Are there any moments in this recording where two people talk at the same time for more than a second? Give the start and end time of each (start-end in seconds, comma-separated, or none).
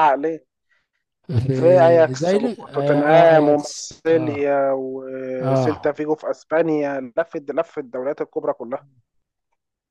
1.5-4.5